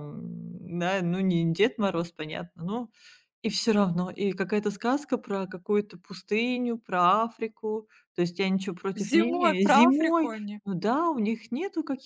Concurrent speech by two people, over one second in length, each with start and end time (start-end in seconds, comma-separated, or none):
8.9-10.6